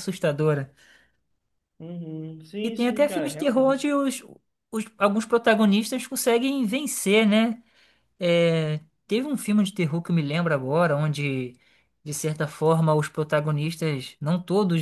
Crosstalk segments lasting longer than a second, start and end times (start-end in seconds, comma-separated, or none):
2.6-3.9